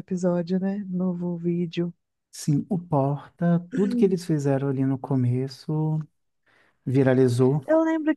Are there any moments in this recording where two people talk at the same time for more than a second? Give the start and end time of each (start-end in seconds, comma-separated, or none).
none